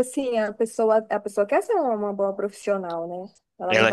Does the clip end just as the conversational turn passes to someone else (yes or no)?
no